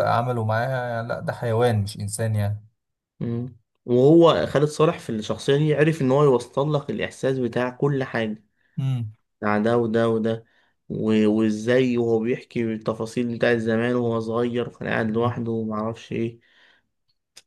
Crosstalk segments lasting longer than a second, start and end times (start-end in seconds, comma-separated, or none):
none